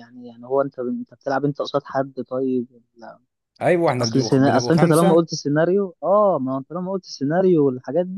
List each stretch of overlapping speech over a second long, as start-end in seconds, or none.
4.0-5.2